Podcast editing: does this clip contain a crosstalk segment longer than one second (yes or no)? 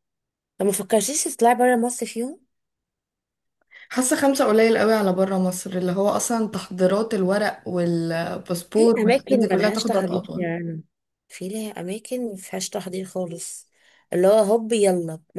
yes